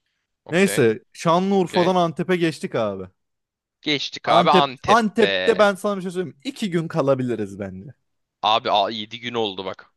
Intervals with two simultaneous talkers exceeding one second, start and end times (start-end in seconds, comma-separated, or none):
4.2-5.7